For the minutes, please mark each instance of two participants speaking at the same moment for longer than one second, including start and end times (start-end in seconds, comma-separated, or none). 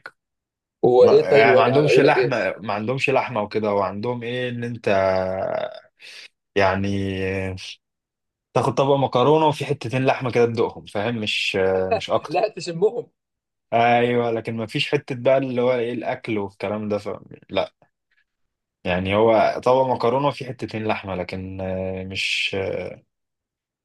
1.0-2.4